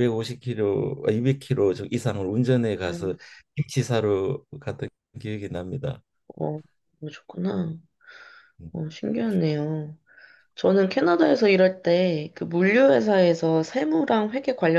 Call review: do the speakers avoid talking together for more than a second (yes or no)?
yes